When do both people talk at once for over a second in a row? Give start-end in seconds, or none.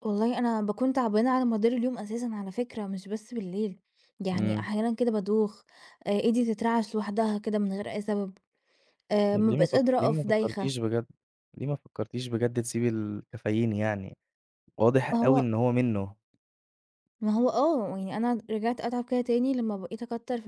9.3-10.8